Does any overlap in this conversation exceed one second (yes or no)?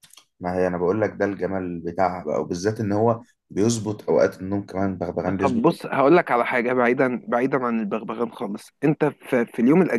no